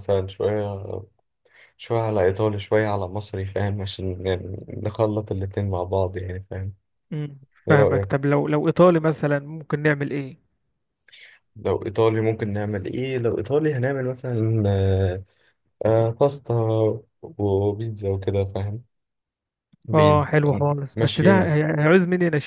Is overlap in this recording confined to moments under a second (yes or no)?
no